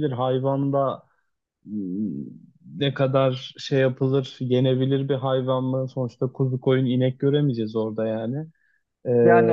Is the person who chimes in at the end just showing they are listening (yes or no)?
no